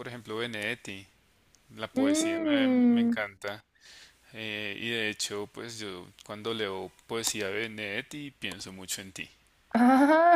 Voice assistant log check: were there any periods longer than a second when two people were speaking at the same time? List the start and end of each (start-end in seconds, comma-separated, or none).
1.9-3.1